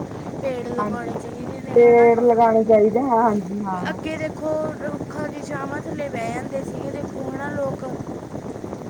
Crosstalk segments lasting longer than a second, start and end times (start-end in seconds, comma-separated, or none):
none